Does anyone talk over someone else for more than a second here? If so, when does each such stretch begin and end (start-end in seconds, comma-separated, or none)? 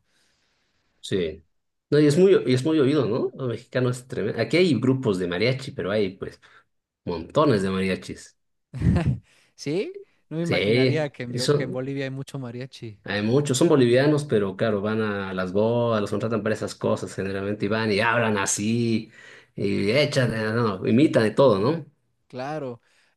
10.4-11.8